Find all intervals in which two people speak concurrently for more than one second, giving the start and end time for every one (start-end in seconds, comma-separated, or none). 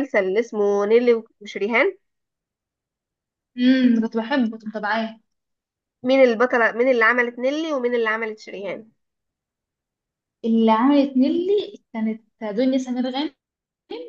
none